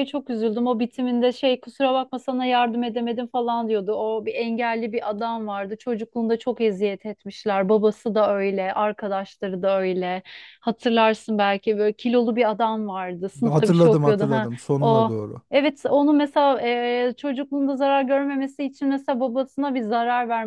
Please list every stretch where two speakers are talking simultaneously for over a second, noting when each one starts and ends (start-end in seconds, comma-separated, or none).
13.4-15.1